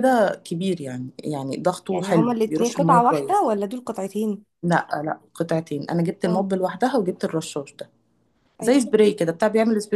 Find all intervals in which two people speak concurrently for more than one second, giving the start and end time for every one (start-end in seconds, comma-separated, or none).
1.9-3.5